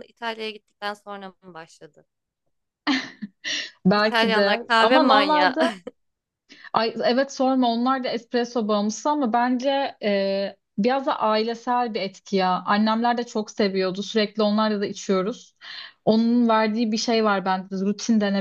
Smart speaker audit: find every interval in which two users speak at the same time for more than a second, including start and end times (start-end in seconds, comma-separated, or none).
3.9-5.6